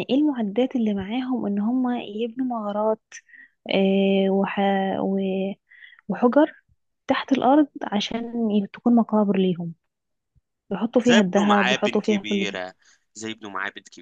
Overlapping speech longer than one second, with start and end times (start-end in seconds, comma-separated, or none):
11.0-12.6